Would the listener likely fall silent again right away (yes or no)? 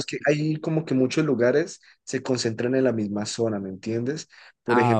yes